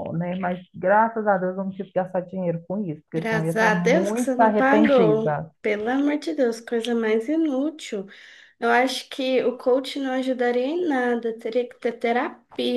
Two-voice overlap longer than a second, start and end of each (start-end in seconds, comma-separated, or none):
3.1-5.5